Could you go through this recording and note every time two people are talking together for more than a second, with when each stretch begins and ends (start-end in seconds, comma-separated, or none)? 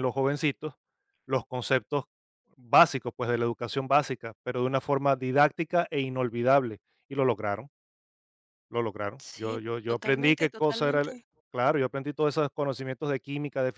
9.2-11.1